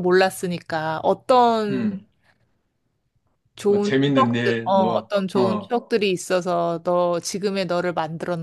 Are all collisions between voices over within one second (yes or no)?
no